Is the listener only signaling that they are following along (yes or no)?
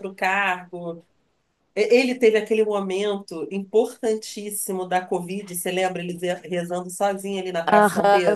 no